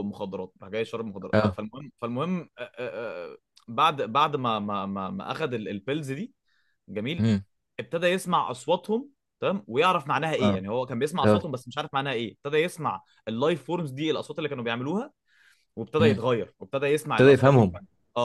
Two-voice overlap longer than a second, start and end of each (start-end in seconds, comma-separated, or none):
none